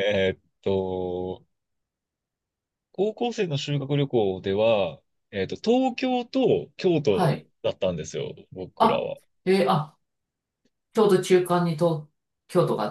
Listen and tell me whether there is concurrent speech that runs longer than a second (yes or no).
no